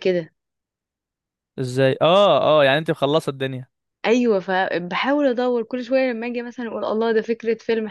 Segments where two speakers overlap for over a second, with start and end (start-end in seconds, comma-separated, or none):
none